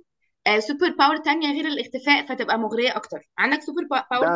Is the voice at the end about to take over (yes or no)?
yes